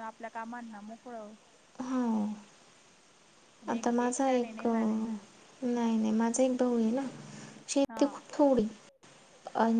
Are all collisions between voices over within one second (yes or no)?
no